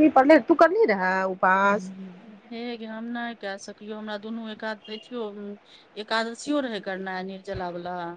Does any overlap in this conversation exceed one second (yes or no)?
no